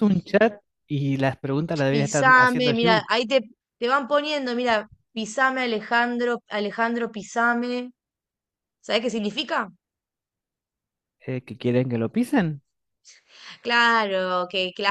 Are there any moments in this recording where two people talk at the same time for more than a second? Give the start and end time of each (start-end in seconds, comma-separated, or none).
1.9-3.1